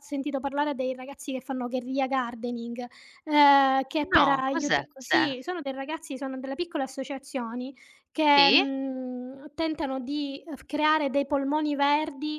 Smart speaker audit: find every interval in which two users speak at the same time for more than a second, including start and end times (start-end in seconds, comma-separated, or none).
4.1-5.3